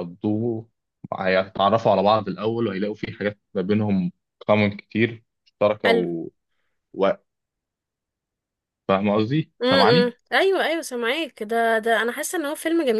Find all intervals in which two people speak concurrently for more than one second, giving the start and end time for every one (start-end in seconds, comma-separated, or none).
none